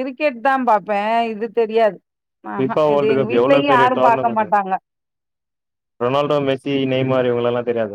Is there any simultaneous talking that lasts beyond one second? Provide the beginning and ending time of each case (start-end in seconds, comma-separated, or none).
2.6-4.5